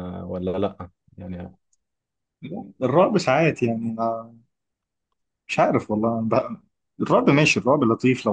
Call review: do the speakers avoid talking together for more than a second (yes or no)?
yes